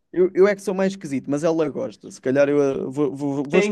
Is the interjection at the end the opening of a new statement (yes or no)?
yes